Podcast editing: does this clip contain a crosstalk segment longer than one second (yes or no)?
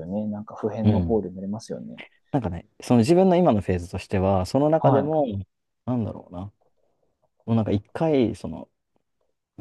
no